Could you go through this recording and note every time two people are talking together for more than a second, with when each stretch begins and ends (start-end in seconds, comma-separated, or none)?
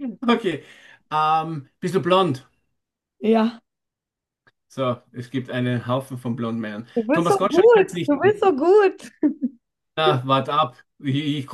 7.0-8.4